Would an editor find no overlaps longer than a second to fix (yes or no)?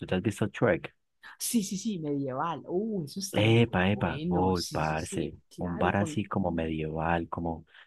no